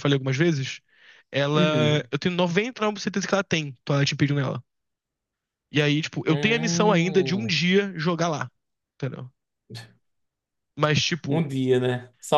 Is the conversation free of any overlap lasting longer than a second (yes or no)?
no